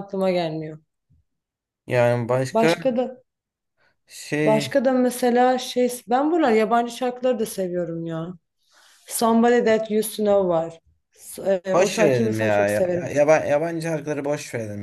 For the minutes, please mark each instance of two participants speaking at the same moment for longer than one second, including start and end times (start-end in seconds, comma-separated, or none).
11.7-13.1